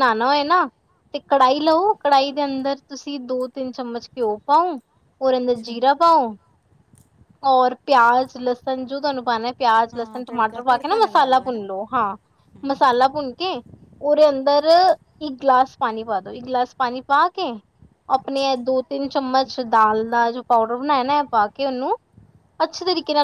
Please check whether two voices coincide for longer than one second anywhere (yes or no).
yes